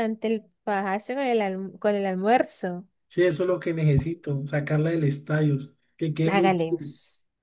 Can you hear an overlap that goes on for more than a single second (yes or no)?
no